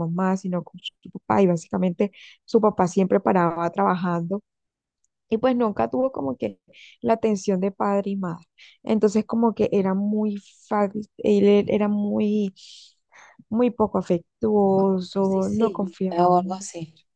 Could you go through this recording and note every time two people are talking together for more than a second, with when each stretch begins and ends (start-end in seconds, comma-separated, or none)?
15.1-16.7